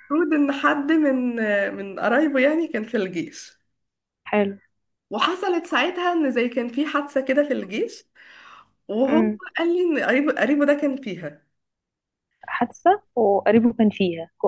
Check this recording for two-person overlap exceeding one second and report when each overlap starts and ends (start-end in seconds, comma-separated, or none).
none